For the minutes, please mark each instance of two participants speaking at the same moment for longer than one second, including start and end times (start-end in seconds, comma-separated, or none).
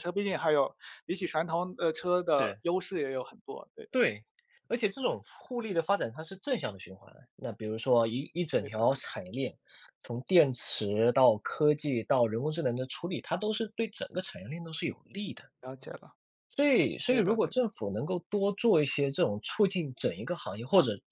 none